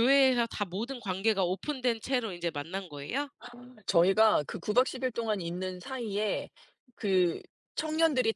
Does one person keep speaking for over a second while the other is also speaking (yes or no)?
no